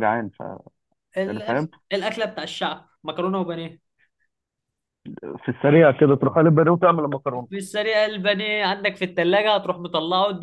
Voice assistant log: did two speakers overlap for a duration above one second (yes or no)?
no